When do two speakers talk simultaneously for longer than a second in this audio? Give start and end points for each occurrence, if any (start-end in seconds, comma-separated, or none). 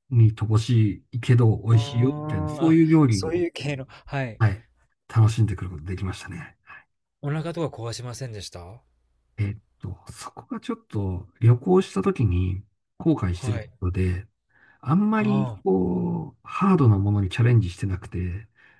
1.7-3.4